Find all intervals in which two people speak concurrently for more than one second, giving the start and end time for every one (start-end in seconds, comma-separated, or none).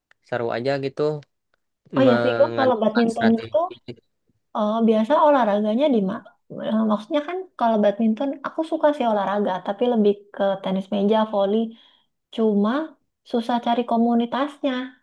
2.0-3.6